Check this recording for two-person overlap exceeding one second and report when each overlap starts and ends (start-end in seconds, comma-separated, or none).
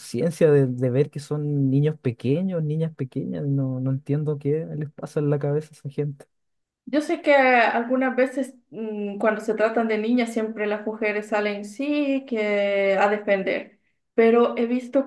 none